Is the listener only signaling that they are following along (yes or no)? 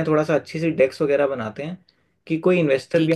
yes